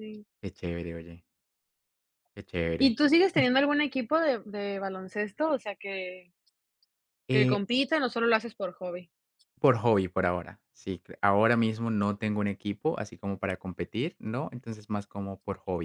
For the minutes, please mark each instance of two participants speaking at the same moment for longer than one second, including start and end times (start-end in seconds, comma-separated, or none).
none